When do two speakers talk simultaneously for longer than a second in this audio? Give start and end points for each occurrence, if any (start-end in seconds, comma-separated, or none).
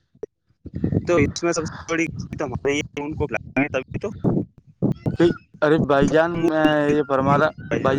none